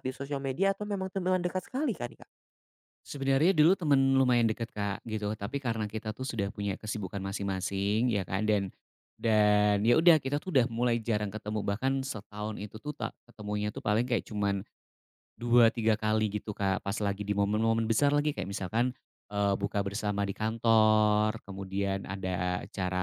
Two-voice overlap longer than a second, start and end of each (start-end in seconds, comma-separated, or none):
none